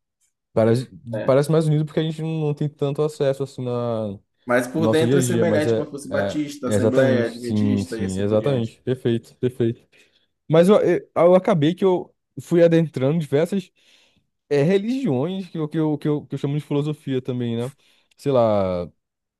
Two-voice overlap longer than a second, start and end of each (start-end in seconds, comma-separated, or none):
4.8-8.8